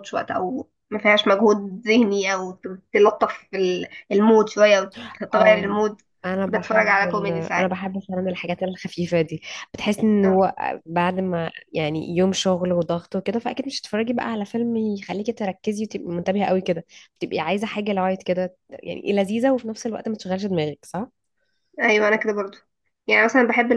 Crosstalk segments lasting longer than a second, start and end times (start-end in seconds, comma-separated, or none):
6.5-7.8